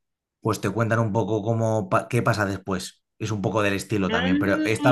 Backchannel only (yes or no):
yes